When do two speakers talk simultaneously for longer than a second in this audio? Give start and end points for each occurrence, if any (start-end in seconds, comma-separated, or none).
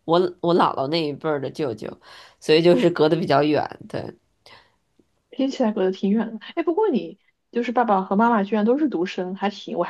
none